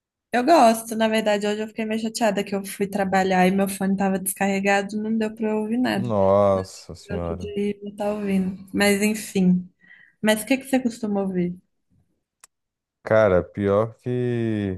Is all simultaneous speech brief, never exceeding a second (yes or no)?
yes